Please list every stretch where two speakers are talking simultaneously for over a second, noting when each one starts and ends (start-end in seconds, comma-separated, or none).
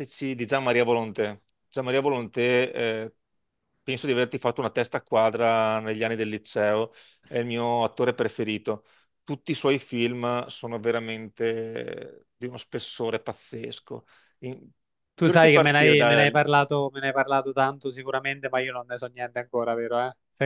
15.2-16.4